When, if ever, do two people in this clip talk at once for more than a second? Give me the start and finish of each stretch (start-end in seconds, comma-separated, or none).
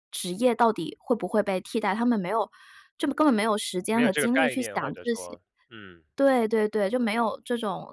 3.9-5.4